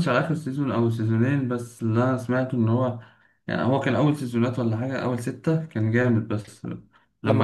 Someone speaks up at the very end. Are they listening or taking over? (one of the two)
taking over